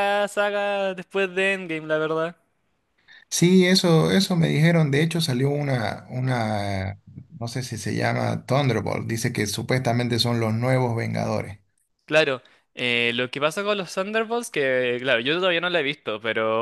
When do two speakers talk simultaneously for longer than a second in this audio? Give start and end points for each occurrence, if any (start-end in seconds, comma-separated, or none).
none